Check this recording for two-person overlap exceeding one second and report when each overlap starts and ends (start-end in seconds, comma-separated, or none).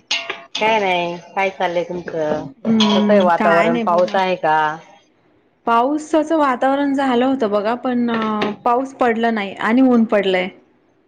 2.6-4.2